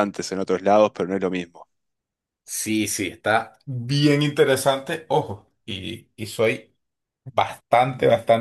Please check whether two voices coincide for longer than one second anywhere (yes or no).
no